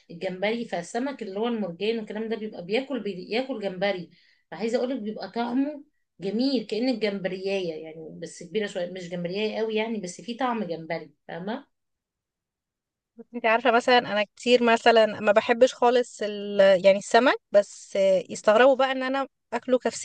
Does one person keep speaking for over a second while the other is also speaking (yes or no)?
no